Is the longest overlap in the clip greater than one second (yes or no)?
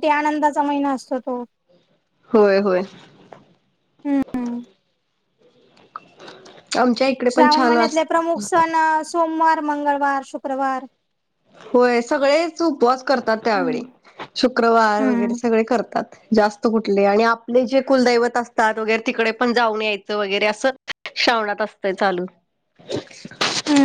no